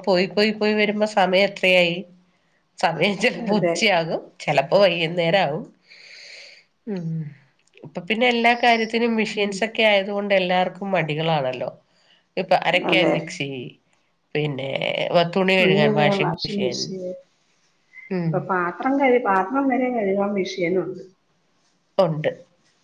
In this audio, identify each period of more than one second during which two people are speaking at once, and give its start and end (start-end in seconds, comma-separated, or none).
none